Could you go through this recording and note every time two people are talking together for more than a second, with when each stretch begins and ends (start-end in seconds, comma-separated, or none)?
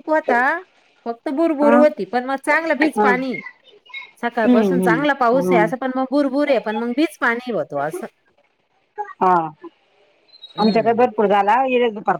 4.3-5.7